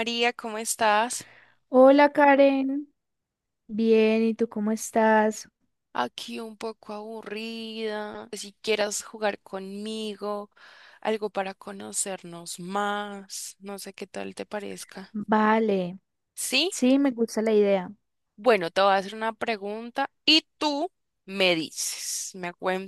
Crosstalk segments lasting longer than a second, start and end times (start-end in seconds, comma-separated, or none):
none